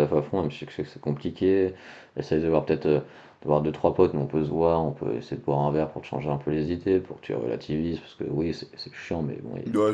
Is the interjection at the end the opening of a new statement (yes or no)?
yes